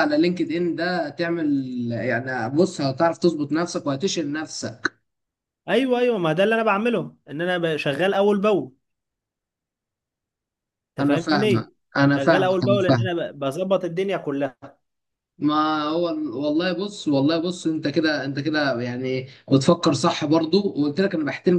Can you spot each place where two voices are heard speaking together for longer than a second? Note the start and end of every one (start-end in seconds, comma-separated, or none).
11.0-13.1